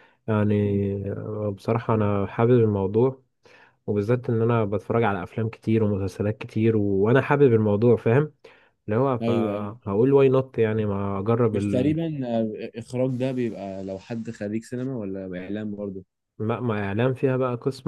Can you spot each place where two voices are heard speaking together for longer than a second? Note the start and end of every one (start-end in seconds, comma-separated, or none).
none